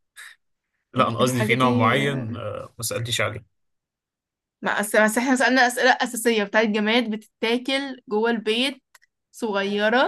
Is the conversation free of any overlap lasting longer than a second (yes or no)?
no